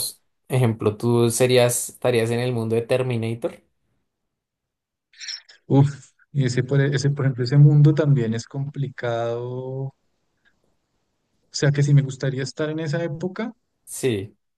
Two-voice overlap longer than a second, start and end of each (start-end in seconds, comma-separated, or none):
none